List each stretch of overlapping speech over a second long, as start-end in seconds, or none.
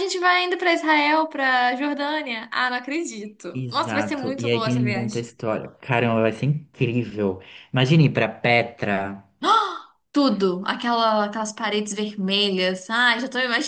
3.5-5.3